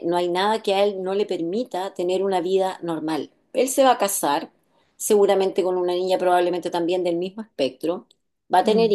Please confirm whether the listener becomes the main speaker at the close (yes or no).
no